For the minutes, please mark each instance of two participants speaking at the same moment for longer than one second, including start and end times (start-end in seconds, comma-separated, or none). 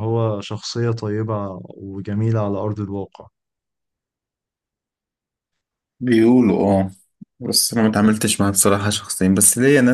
none